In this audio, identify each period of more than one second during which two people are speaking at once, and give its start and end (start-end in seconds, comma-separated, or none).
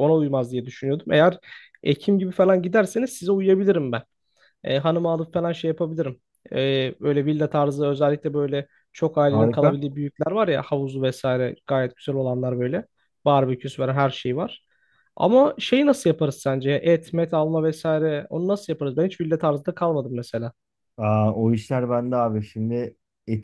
none